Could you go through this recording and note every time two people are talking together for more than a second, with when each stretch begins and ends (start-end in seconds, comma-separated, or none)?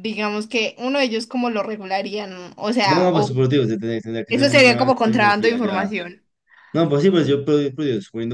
4.3-5.9